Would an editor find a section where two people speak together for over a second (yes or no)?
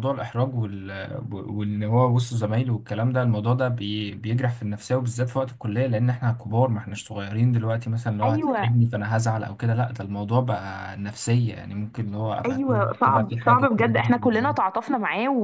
yes